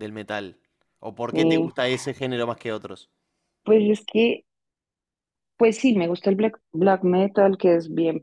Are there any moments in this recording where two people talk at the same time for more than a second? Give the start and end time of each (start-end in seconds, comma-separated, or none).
none